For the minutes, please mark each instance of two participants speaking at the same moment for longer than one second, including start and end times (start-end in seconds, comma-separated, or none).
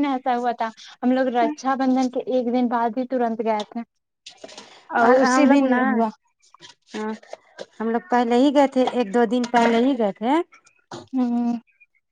none